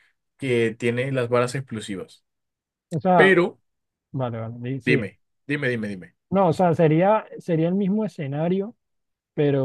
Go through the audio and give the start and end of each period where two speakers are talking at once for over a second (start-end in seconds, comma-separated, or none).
none